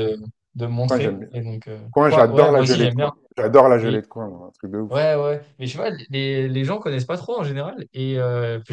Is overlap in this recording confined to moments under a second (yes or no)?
no